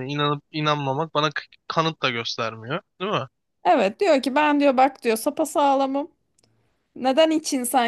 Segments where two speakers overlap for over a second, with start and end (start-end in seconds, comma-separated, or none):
none